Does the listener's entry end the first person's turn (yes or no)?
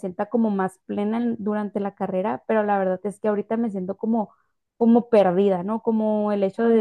no